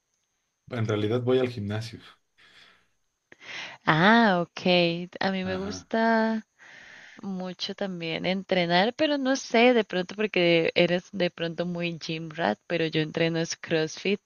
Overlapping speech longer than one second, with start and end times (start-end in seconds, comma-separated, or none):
none